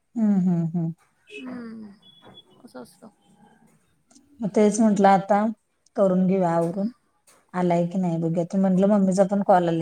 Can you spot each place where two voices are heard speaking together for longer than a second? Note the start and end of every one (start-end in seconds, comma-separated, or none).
none